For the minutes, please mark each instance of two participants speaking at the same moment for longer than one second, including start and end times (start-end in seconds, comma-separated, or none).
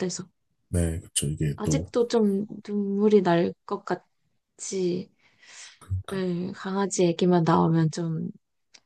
none